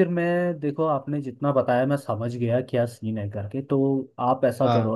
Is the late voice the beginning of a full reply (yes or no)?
no